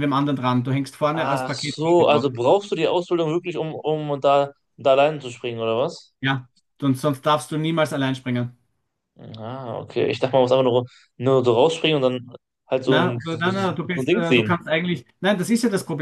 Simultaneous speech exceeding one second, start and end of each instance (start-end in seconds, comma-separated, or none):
1.1-2.3, 12.9-14.5